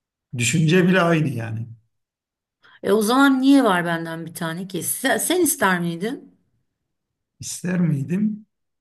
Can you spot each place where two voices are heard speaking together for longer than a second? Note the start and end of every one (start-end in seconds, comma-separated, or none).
none